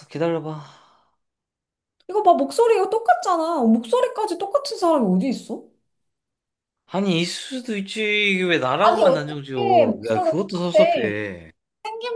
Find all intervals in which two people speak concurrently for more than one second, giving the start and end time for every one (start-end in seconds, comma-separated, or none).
8.8-11.2